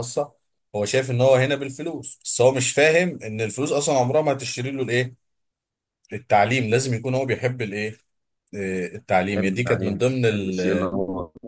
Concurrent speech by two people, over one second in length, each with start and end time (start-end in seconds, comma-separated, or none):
9.3-10.6